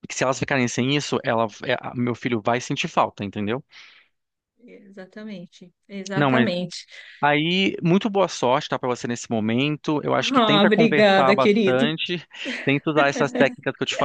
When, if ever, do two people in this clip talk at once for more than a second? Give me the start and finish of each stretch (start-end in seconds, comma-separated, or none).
10.2-11.9